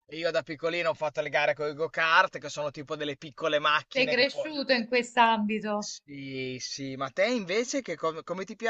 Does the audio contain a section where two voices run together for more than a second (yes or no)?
no